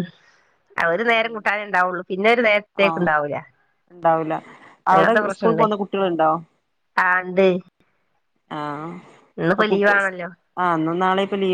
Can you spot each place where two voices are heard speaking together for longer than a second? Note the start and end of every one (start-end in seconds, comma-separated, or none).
4.9-6.3